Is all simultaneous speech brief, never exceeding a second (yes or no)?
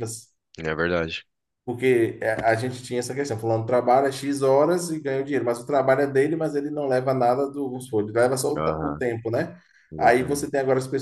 yes